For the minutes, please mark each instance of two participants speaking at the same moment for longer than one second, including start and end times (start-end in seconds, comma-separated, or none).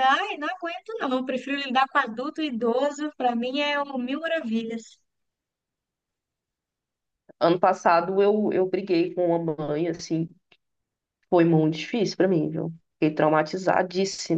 none